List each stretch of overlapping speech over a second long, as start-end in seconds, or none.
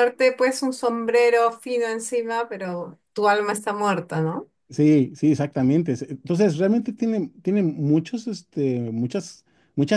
none